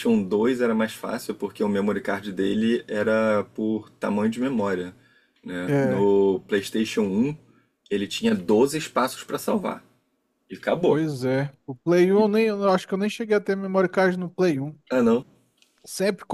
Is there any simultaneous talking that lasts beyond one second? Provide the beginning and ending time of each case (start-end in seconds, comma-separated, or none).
none